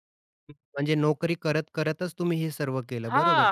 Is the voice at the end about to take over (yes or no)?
yes